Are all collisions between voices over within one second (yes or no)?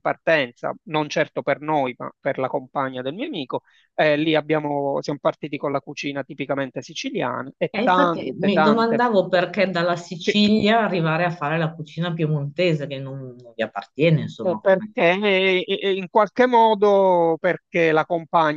no